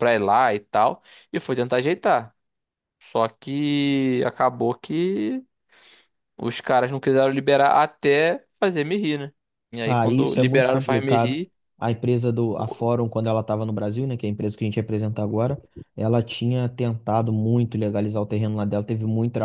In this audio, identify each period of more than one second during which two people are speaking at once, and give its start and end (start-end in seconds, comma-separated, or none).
9.8-11.4